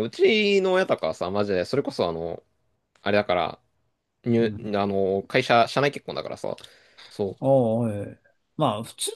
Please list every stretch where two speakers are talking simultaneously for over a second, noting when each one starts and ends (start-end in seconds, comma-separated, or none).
none